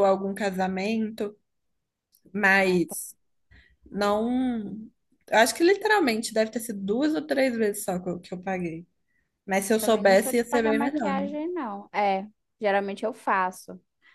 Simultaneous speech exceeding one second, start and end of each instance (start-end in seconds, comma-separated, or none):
9.8-11.2